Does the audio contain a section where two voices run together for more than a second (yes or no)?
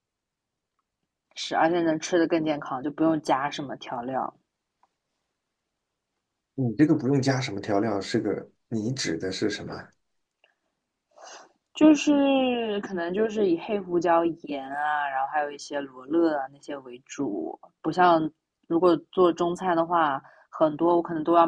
no